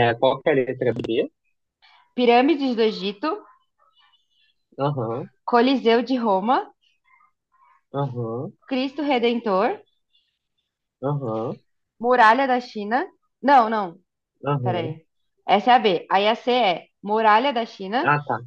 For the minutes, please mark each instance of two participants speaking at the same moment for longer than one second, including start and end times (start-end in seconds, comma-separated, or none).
none